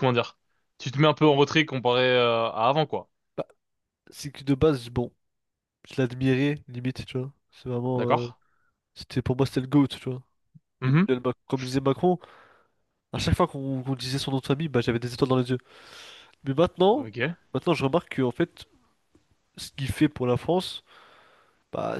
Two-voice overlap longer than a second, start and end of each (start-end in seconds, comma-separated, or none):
none